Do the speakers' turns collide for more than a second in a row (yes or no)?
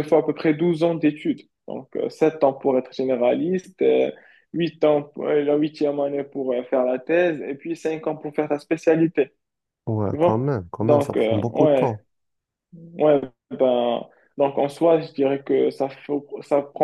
yes